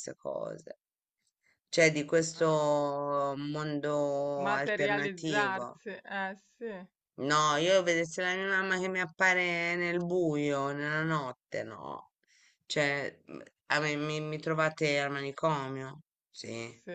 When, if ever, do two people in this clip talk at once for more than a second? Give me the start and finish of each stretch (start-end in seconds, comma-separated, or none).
4.4-5.8